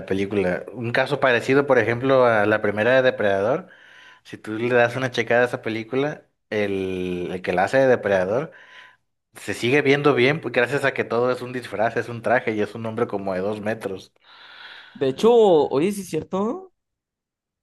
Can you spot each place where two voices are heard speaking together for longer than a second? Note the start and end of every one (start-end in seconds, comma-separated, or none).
none